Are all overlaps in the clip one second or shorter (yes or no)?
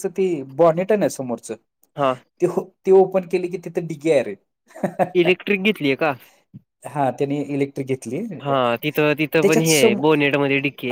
no